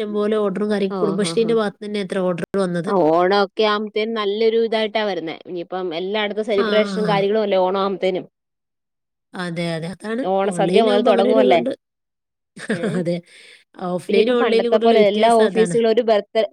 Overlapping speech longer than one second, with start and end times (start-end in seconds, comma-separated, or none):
14.1-15.8